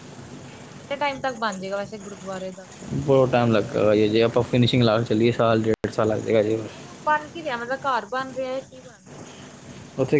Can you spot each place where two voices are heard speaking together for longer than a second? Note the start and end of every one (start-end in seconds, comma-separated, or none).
none